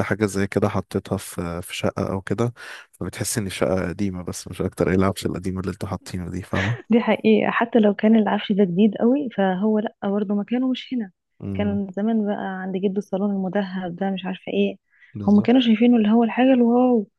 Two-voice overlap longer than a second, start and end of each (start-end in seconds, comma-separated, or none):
none